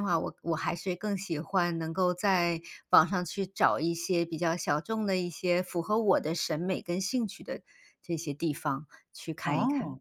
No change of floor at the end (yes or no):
no